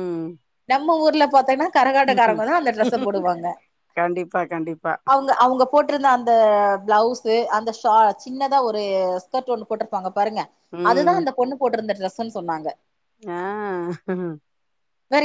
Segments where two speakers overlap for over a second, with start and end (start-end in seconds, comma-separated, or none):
none